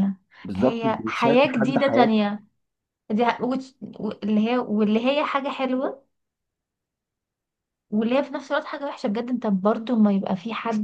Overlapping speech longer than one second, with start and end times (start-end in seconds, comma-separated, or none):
0.6-2.1